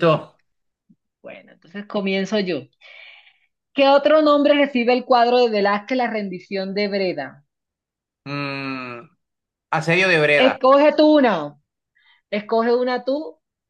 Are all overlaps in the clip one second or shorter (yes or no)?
yes